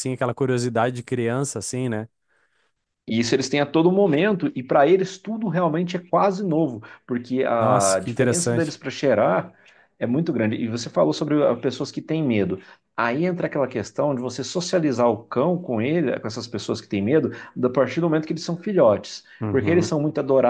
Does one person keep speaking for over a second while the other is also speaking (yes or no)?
yes